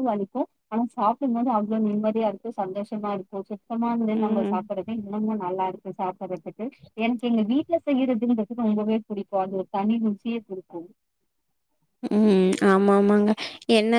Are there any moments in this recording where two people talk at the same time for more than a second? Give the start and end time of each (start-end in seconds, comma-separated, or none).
none